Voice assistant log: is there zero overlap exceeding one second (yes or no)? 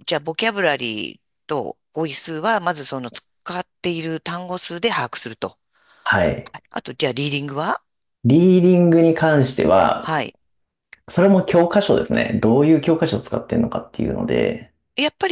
yes